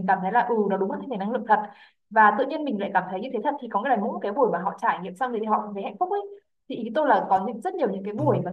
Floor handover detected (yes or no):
no